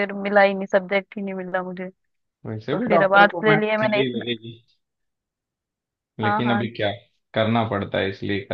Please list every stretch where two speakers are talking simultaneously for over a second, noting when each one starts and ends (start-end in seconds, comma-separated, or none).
2.5-4.2